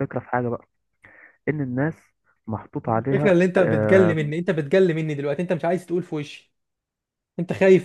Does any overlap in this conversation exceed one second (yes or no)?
no